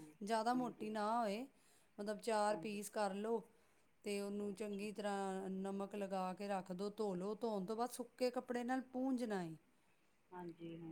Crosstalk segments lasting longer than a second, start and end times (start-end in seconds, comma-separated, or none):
none